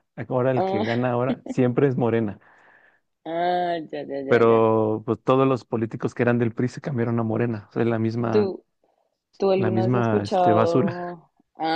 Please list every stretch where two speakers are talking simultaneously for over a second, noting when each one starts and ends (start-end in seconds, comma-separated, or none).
9.6-11.2